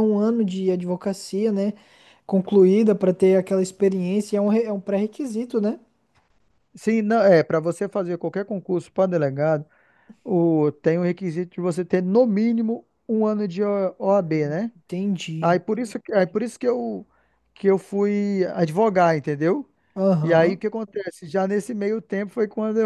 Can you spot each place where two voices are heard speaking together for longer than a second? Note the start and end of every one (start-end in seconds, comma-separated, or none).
none